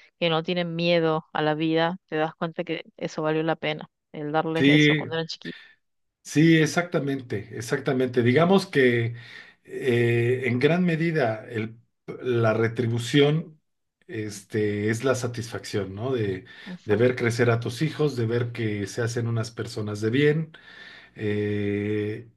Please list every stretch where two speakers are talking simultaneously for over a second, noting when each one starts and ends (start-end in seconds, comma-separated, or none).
none